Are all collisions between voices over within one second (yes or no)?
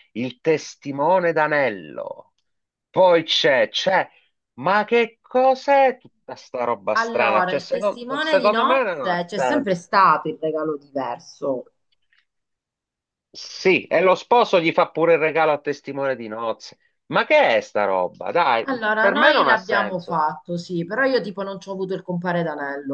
no